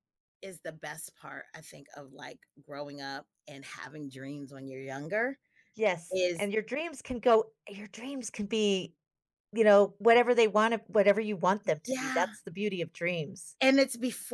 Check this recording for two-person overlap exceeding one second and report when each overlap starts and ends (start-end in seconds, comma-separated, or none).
none